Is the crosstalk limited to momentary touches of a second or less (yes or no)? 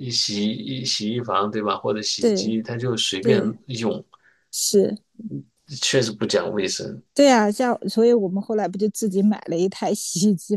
yes